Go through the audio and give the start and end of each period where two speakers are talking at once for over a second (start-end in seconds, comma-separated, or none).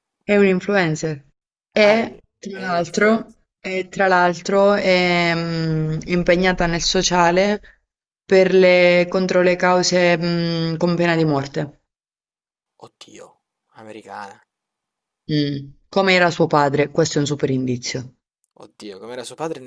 1.8-3.4